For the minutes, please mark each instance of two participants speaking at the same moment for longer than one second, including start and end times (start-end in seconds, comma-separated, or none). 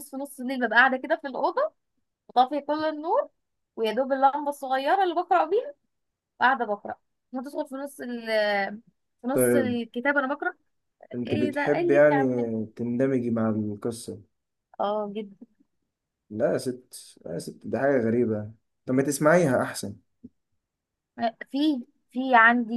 11.3-12.5